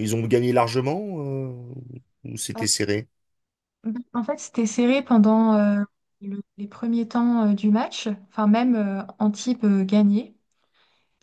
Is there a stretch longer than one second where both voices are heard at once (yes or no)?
no